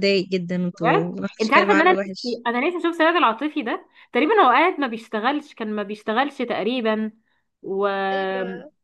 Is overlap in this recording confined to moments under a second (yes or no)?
no